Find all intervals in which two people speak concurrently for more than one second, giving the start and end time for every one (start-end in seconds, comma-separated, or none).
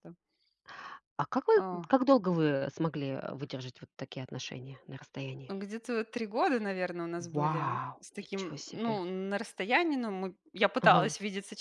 7.3-9.0